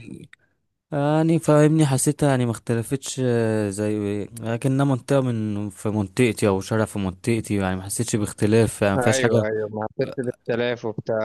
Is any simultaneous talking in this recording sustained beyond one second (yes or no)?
no